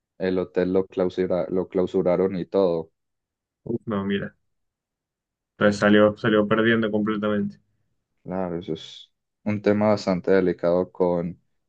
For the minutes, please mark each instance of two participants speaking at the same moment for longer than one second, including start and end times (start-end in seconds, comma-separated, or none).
none